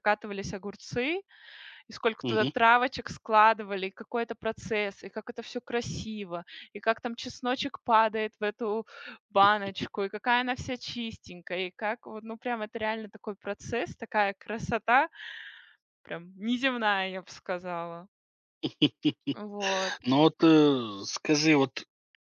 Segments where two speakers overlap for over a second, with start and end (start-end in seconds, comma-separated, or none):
none